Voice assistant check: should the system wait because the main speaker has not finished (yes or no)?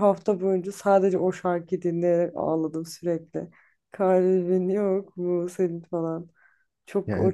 no